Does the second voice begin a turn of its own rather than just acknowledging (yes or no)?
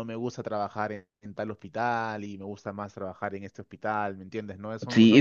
yes